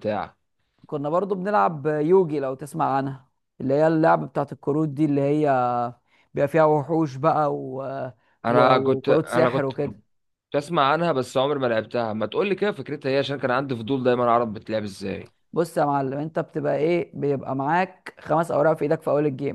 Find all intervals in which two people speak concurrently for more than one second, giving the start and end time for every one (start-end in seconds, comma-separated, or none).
8.5-9.7